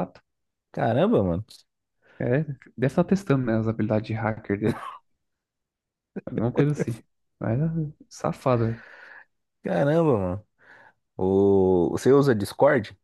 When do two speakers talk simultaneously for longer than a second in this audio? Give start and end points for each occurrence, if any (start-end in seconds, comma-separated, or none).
none